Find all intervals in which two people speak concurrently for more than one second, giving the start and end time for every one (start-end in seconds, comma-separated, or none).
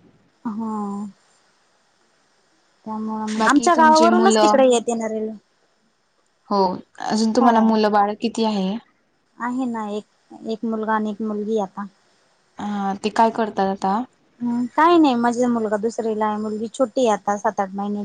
3.4-4.6